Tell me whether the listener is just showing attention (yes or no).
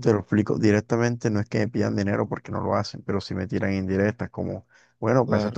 yes